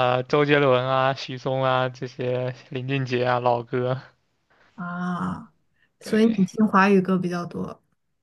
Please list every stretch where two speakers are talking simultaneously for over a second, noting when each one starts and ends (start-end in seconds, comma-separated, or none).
none